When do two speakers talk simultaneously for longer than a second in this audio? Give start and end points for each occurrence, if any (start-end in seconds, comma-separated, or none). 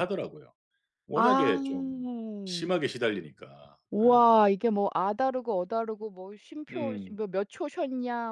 none